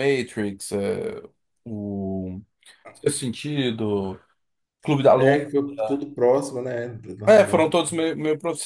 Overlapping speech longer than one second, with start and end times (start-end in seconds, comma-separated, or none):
none